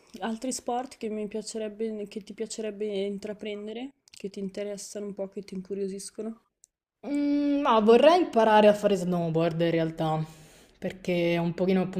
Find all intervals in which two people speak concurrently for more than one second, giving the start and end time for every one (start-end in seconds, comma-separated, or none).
none